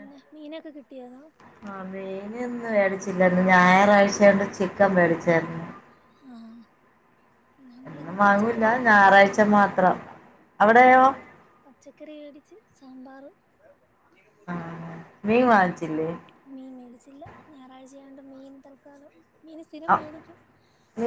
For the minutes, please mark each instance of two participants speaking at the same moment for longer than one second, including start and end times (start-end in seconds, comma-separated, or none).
7.9-9.6